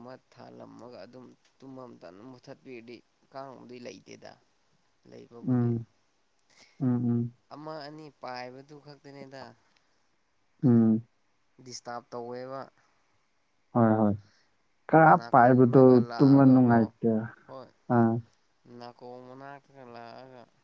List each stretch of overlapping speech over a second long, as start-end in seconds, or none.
15.2-16.8